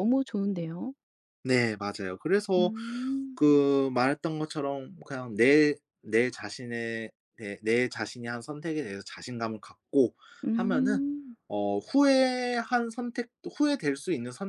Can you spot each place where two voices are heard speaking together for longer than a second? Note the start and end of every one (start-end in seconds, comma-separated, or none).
none